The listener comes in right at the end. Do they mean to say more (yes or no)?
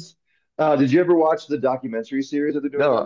yes